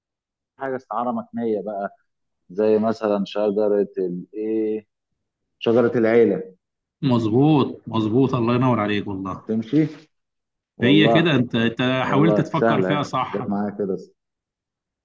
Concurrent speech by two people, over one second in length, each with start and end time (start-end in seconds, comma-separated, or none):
12.1-13.6